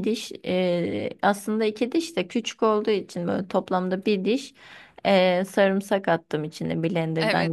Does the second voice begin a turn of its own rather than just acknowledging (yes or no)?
yes